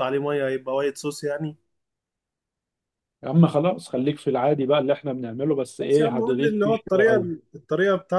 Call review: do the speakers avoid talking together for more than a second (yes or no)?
no